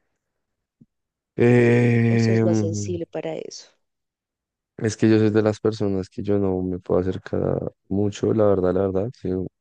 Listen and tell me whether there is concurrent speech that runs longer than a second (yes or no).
no